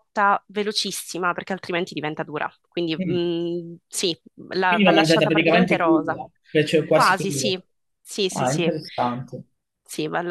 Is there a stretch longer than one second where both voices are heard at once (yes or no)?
yes